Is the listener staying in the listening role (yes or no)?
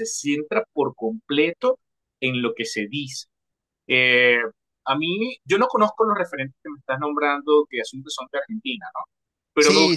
yes